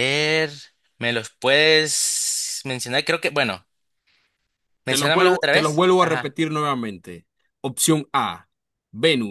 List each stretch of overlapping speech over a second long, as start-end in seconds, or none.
4.8-6.3